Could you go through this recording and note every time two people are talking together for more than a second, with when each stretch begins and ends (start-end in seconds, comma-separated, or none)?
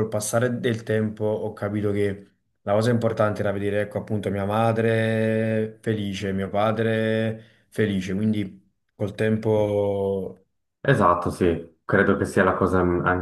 none